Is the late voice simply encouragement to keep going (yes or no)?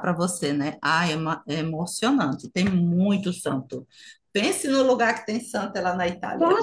no